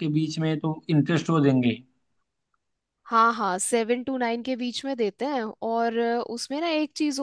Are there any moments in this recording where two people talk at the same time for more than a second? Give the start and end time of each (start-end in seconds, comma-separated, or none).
none